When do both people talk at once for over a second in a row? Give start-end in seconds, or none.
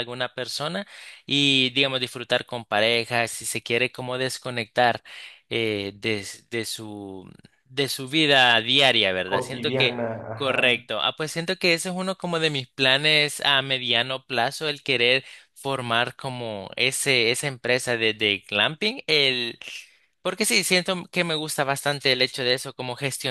9.2-10.8